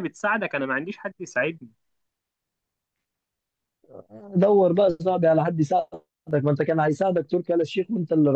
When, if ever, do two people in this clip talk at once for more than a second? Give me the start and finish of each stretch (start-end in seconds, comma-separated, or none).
none